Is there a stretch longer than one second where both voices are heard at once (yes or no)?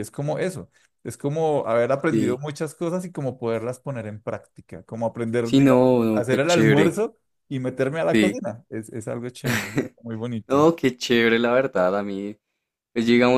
yes